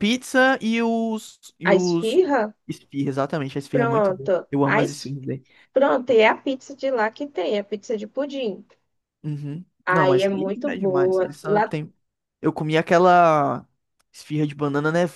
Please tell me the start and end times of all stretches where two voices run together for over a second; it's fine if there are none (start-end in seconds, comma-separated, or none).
3.7-5.1, 9.8-11.7